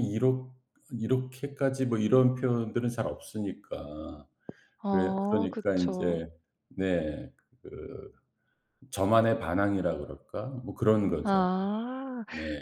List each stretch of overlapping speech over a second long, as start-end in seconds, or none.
4.9-6.2